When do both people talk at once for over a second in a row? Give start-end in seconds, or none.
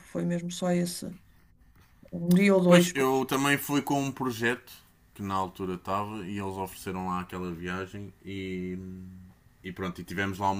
none